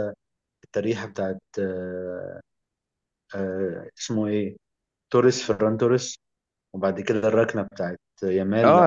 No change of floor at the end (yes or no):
no